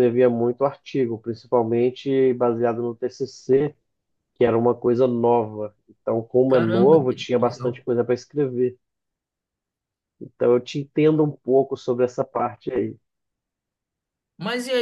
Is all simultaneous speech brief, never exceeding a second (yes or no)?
no